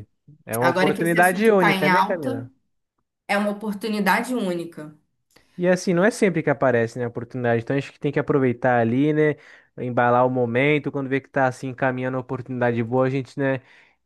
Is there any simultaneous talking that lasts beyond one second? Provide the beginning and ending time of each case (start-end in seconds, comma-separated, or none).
0.6-2.5